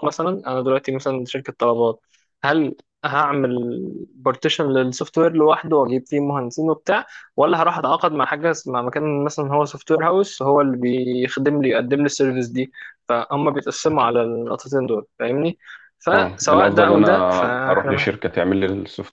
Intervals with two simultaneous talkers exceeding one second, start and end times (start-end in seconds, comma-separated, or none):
16.1-18.3